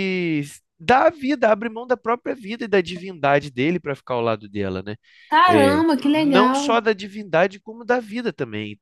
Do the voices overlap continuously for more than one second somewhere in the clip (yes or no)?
yes